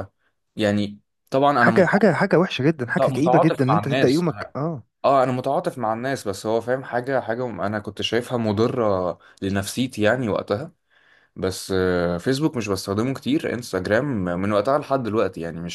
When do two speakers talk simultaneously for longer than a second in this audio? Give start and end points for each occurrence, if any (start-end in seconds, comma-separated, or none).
2.9-4.5